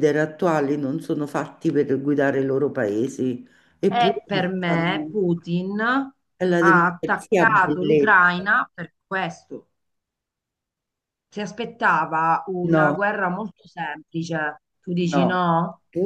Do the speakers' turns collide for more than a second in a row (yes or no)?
yes